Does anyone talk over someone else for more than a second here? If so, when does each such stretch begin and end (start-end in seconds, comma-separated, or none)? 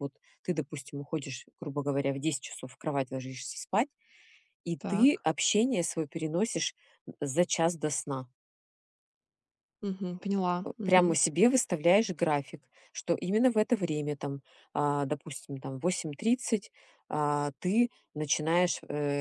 none